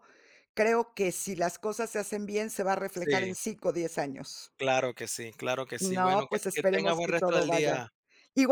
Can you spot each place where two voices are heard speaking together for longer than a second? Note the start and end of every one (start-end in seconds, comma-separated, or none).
5.8-7.8